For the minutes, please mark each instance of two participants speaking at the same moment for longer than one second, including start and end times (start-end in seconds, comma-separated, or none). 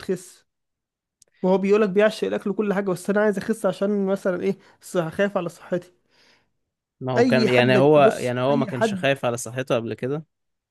7.2-9.0